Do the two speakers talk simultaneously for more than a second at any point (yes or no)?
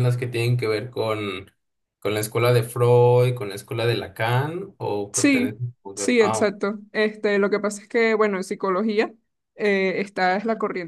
no